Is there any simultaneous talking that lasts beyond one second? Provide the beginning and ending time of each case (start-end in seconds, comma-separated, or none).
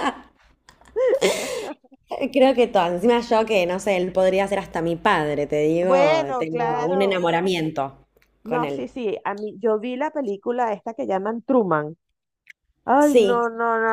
5.8-7.3